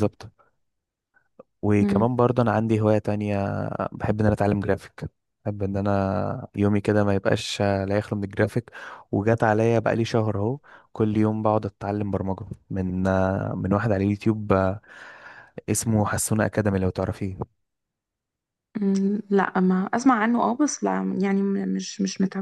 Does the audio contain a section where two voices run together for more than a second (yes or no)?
no